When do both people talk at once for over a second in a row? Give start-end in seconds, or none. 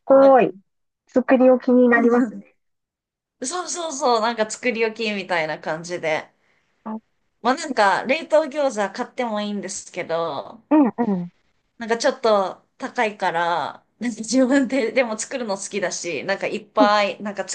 none